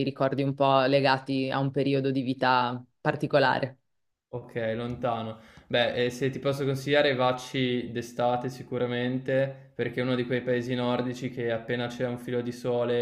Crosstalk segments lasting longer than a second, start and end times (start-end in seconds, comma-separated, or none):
none